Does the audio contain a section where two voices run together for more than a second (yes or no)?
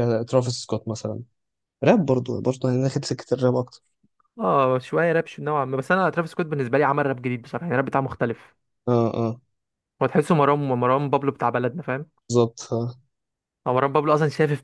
no